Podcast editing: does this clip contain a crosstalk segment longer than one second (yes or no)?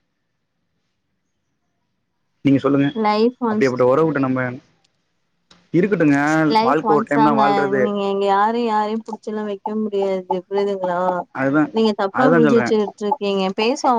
no